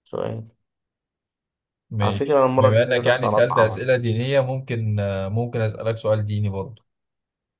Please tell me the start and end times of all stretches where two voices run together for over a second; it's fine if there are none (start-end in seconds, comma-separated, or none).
2.0-3.9